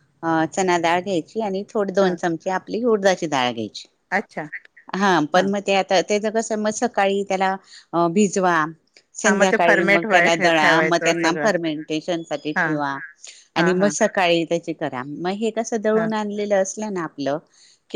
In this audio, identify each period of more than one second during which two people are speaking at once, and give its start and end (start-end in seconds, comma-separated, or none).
9.2-11.5